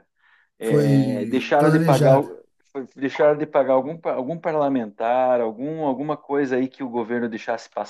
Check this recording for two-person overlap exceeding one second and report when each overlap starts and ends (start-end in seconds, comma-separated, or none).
0.6-2.3